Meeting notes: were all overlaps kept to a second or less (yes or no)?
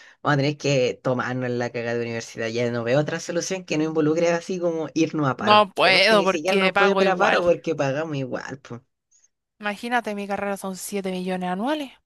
no